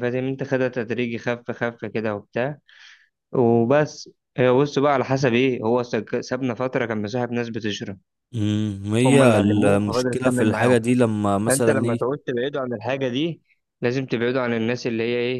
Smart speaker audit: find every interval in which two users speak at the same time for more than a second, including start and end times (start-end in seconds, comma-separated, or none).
9.0-10.8